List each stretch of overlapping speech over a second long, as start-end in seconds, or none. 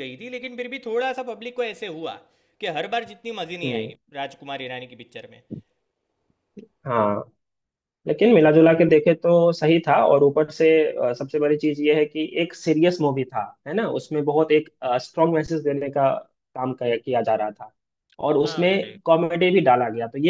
none